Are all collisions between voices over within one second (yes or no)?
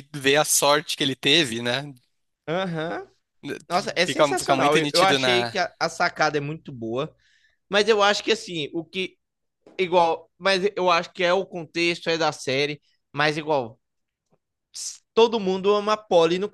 no